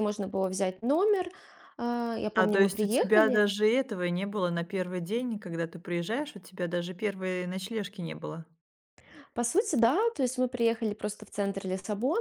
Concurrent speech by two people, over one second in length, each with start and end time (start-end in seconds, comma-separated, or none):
2.4-3.5